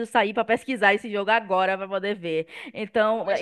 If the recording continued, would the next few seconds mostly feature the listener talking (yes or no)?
yes